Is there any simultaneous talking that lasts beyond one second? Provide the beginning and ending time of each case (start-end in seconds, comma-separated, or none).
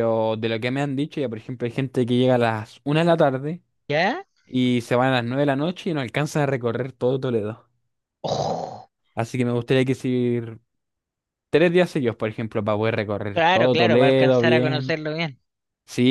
13.3-14.9